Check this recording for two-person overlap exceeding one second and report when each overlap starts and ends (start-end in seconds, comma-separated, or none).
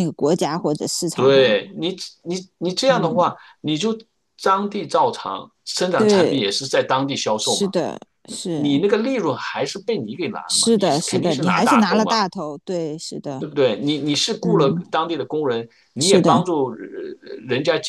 10.5-12.2